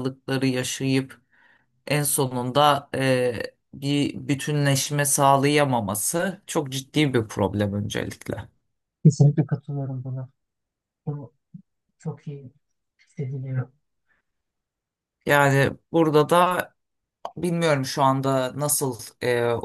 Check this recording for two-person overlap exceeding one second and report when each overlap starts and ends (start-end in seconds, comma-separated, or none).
none